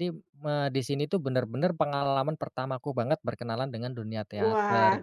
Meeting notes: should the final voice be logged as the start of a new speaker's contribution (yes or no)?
yes